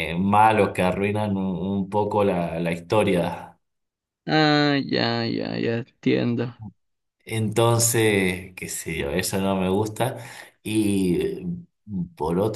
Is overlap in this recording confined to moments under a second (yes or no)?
yes